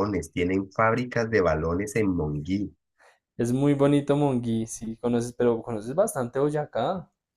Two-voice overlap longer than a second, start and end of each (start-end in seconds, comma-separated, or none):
none